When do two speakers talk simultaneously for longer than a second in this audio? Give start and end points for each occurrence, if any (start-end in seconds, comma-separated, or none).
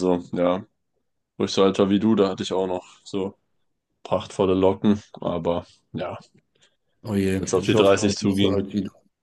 7.4-8.6